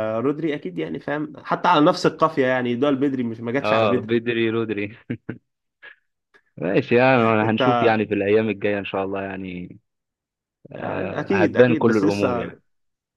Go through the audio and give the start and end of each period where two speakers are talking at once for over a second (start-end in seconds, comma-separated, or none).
10.8-12.6